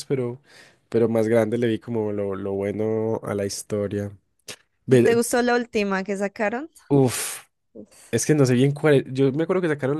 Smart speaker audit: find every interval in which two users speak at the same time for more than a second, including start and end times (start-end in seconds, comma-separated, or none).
none